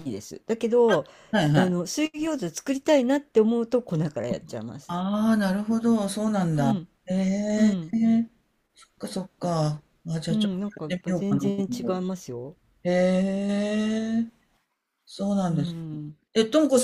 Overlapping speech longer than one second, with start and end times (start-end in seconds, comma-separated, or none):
10.3-12.1